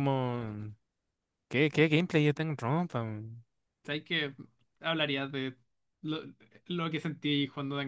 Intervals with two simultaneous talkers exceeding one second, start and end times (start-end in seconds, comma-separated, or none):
none